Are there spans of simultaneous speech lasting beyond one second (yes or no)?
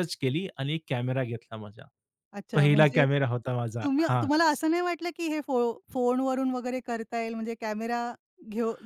no